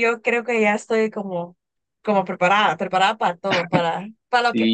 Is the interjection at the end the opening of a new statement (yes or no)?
yes